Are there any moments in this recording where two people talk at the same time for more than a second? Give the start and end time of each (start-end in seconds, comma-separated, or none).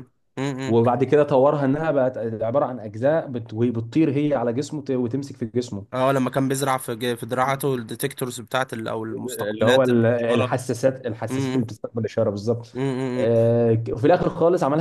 9.1-10.6